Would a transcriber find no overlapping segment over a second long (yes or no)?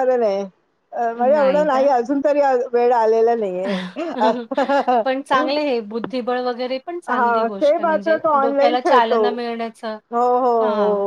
no